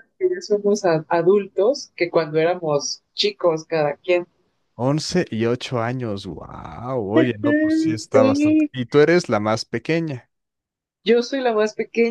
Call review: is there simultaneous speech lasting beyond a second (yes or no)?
yes